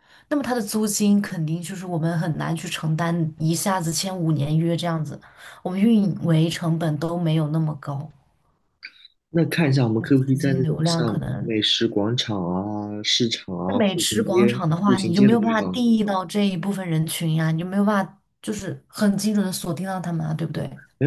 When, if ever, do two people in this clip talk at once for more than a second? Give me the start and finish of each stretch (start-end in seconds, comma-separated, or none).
10.1-11.5, 13.7-15.8